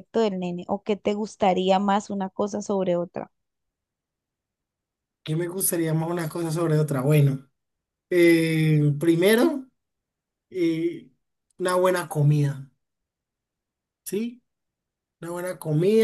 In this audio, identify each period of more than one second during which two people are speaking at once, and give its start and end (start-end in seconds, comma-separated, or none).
none